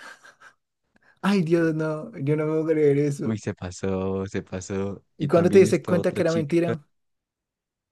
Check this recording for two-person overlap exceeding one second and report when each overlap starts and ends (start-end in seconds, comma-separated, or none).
5.2-6.7